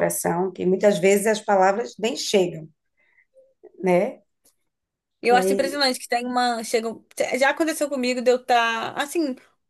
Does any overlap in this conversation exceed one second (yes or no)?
no